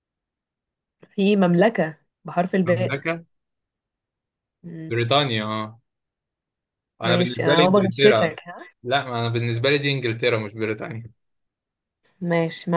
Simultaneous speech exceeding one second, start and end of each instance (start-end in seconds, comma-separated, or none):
7.0-8.4